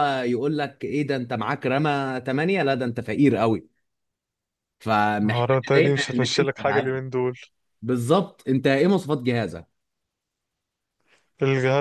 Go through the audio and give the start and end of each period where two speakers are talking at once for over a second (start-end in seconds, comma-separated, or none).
5.2-6.9